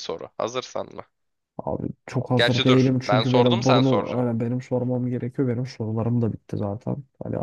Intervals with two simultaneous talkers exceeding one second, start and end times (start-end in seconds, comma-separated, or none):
2.4-4.3